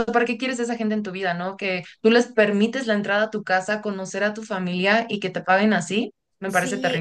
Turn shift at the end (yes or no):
yes